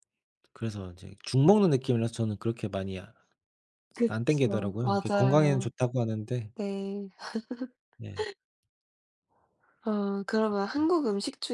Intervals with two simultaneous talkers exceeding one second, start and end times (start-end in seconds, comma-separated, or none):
4.1-5.7